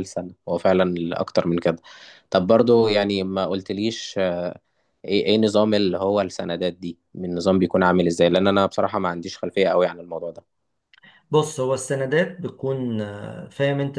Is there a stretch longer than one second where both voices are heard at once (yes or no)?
no